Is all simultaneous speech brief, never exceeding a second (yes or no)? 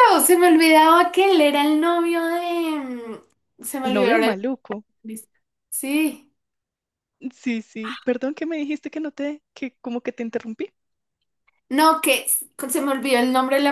yes